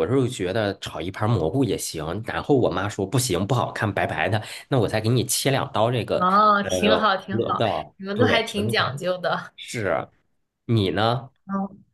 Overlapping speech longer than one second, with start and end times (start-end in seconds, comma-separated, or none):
6.1-8.9